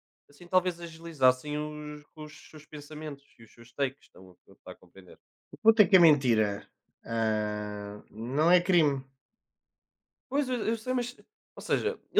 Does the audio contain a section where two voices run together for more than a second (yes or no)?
no